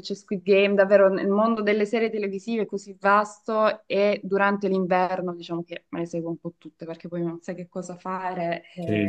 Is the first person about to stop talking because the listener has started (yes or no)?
yes